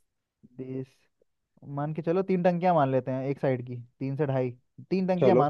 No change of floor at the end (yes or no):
yes